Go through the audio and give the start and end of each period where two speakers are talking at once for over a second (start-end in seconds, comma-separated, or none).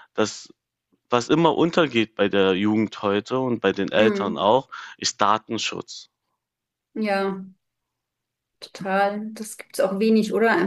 none